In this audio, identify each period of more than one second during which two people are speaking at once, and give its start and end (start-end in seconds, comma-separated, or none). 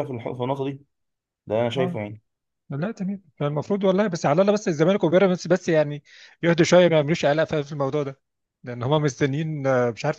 none